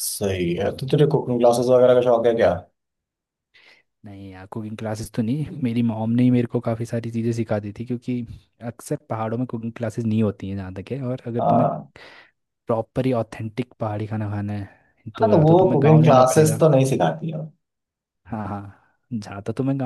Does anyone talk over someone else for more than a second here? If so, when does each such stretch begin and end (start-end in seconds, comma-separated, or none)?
15.2-16.6